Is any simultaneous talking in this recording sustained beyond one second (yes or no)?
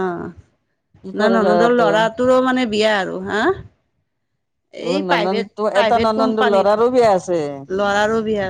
yes